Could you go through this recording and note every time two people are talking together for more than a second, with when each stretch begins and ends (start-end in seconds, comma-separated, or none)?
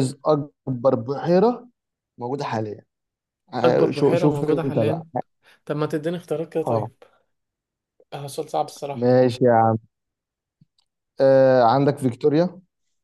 3.6-5.0